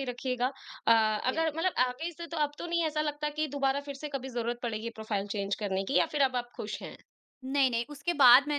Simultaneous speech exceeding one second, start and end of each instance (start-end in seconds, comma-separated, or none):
none